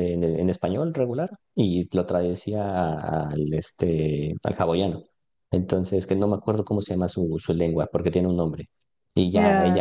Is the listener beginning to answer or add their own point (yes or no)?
no